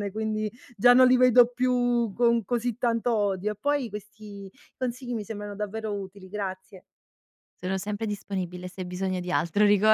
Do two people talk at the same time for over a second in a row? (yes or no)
no